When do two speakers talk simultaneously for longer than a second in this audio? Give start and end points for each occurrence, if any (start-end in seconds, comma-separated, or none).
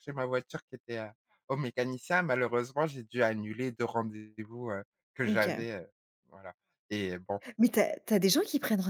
none